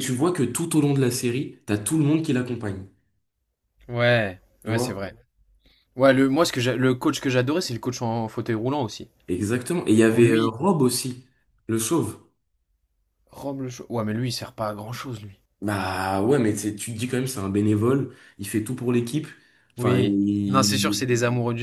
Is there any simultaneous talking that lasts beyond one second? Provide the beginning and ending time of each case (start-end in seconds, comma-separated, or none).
19.8-21.1